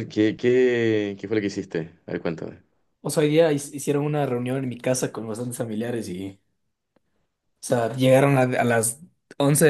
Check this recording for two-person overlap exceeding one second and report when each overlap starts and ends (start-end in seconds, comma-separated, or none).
none